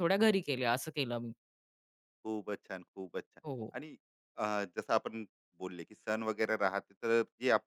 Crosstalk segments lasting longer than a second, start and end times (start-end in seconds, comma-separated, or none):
none